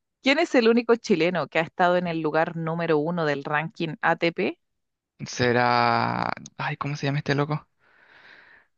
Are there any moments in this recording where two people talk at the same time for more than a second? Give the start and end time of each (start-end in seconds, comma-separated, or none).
none